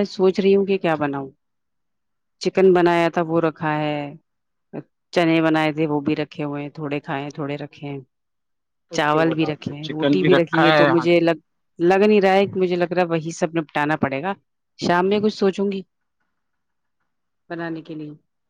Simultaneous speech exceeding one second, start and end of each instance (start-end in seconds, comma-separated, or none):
9.0-11.1